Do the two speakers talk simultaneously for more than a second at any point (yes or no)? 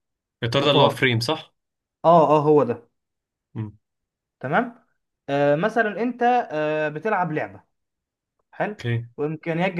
no